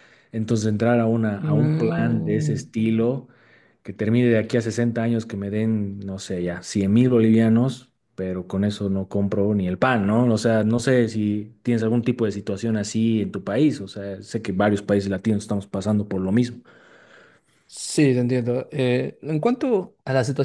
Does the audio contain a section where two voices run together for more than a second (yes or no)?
yes